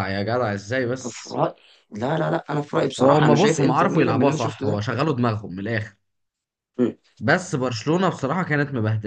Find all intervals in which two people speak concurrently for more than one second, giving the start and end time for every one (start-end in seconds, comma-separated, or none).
3.0-4.8